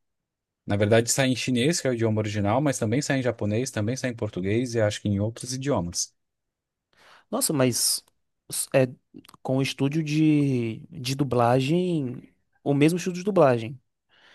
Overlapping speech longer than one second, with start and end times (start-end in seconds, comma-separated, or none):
none